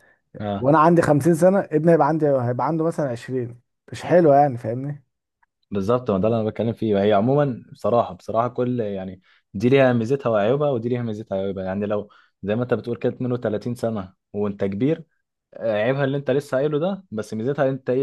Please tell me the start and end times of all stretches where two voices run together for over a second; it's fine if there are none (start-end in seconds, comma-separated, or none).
none